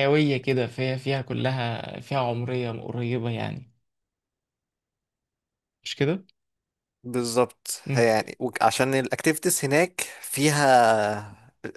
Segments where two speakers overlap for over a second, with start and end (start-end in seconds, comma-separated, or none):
none